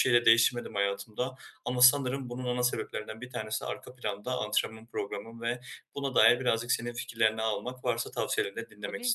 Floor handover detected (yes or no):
yes